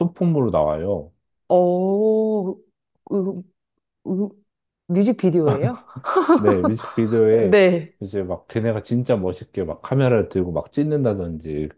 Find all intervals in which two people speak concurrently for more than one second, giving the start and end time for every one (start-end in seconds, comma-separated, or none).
none